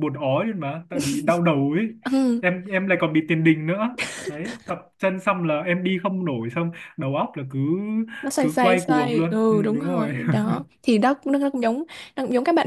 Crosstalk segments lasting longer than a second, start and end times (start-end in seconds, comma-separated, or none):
8.4-10.1